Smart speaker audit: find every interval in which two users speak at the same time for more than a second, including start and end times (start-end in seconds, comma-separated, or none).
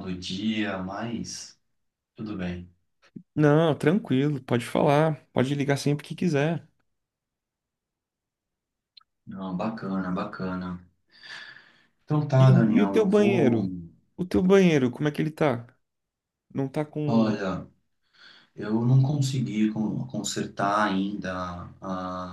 12.4-13.7